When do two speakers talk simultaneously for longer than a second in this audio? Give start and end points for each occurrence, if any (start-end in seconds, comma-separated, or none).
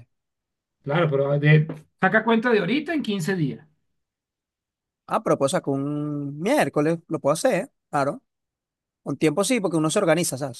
none